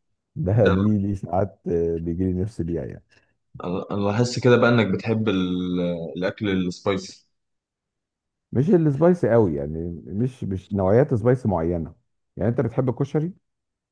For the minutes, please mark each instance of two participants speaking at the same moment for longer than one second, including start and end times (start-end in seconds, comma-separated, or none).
none